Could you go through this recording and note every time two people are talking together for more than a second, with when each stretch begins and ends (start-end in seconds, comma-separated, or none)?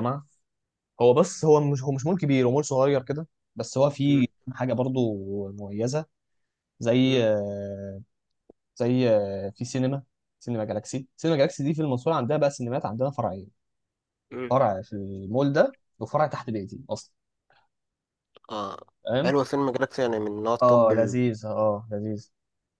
none